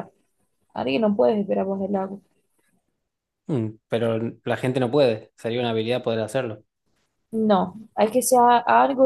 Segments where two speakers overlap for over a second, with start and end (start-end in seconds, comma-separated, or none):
none